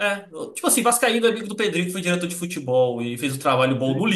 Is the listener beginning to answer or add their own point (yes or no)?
no